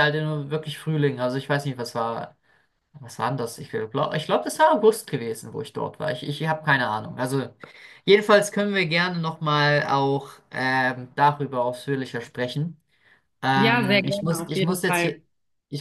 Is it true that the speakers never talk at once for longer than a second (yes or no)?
no